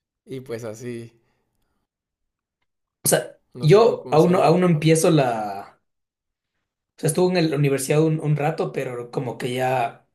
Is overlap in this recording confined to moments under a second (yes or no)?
no